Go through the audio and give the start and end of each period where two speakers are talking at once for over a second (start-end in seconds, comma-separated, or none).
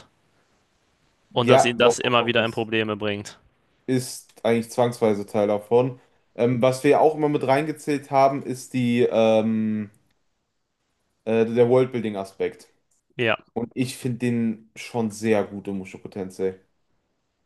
1.5-2.7